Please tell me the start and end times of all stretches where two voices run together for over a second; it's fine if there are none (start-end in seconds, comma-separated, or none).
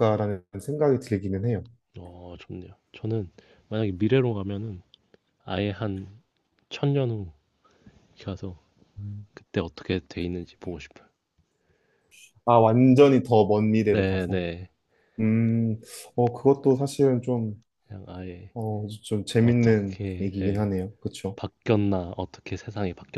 19.4-20.7